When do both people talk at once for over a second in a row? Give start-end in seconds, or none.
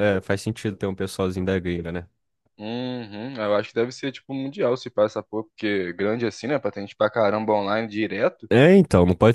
none